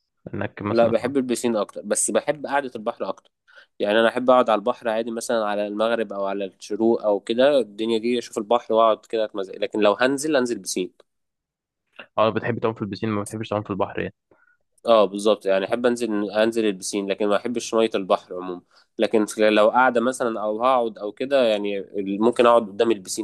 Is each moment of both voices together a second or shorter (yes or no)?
yes